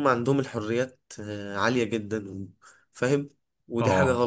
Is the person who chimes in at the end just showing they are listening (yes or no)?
yes